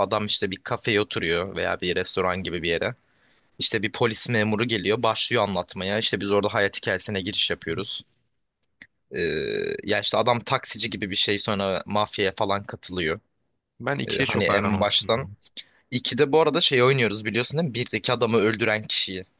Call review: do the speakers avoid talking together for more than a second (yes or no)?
no